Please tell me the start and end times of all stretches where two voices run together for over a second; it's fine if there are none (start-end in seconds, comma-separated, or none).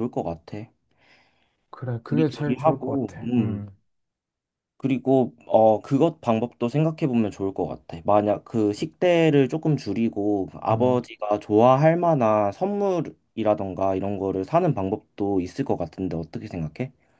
2.1-3.7